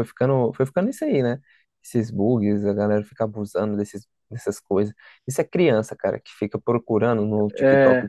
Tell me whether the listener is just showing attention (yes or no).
yes